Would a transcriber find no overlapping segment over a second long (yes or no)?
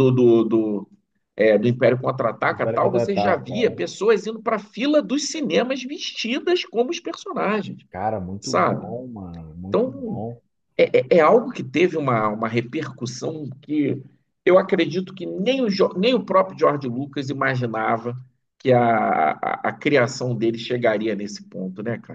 no